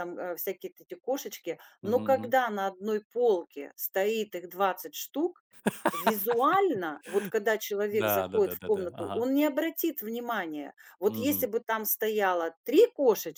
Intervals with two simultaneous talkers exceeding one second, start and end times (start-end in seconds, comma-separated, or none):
7.9-9.3